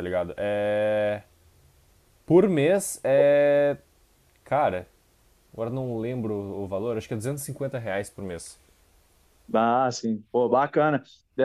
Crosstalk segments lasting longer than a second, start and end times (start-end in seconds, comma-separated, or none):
none